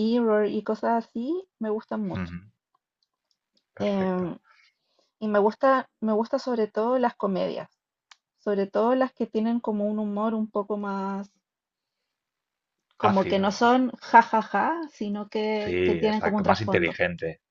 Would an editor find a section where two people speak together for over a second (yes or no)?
yes